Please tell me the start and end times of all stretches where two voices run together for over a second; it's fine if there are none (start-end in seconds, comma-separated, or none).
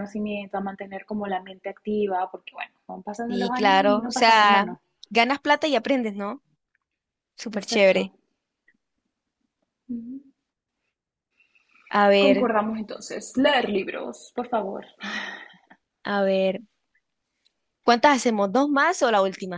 3.3-4.7